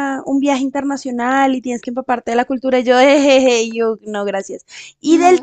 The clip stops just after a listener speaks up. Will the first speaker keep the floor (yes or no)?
yes